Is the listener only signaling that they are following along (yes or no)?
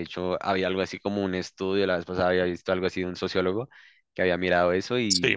yes